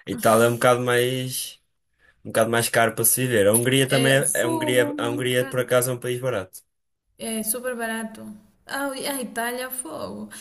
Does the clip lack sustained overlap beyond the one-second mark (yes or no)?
no